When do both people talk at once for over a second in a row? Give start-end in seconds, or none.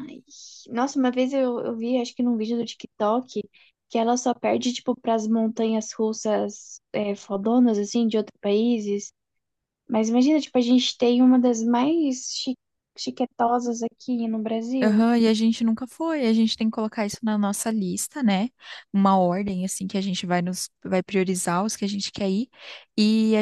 none